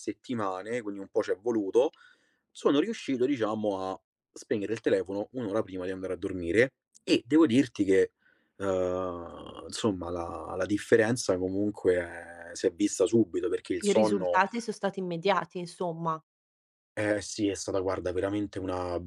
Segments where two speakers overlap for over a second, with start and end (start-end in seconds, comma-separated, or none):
none